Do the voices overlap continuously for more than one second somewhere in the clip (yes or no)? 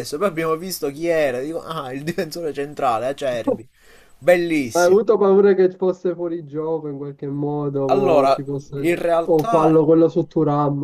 yes